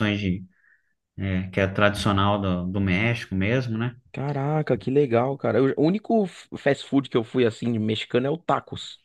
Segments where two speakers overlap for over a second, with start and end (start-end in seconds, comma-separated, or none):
none